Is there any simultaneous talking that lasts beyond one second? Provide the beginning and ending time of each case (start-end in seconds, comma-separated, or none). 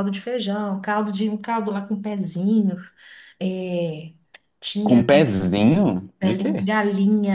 none